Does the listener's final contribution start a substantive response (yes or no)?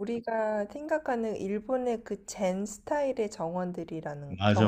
yes